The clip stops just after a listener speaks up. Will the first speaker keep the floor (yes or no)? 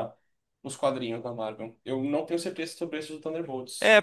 no